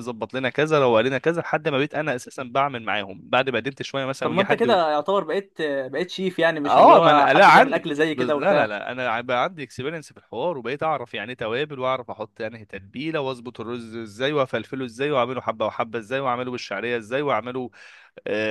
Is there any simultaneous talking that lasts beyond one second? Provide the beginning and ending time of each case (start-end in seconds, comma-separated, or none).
6.6-8.7